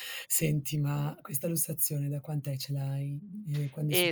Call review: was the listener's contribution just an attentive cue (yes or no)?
no